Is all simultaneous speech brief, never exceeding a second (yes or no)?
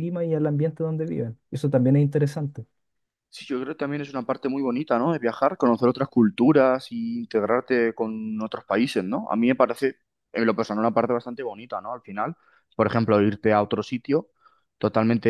yes